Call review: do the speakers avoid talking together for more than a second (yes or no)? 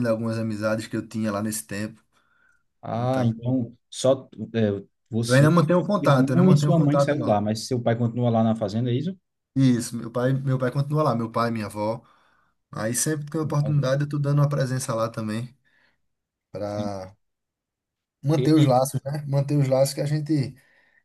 no